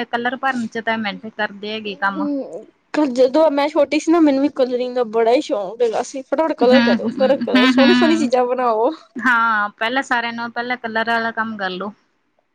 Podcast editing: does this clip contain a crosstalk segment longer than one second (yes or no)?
yes